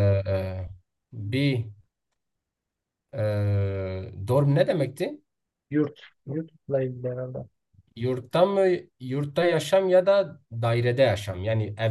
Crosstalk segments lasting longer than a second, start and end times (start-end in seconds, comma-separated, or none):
none